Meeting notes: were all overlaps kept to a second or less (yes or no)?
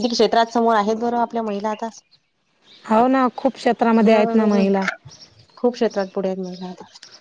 yes